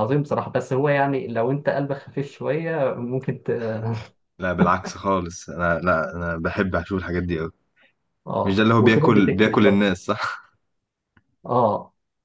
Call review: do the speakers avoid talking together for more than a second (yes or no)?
no